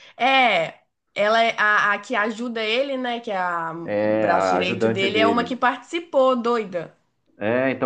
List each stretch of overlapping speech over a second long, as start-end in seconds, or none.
3.8-5.6